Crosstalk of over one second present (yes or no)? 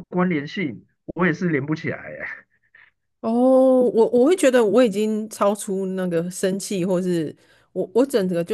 no